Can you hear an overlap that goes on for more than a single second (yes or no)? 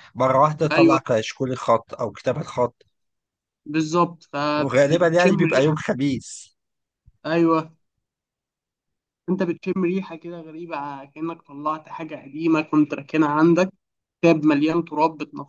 yes